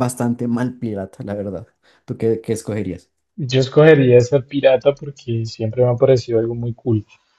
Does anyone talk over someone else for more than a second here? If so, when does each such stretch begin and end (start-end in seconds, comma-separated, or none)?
none